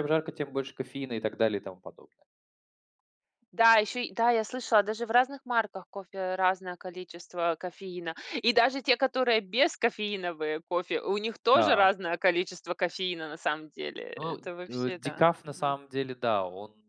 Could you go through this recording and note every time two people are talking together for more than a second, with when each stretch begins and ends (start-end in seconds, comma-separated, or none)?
14.2-15.8